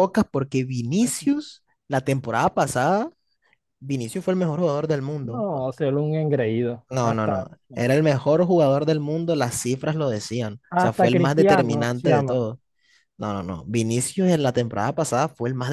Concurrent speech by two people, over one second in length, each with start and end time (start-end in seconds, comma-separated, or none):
10.7-12.5